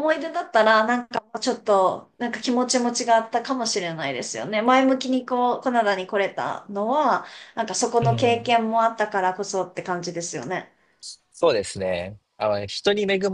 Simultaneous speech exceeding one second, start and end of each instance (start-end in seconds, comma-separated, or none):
none